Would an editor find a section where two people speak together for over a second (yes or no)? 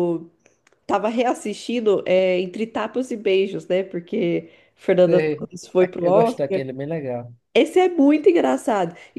yes